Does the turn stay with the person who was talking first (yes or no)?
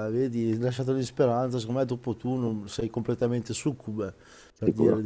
yes